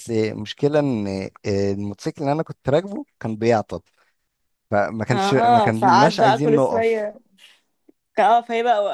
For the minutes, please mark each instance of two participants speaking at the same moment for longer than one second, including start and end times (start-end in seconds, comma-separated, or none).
5.1-7.1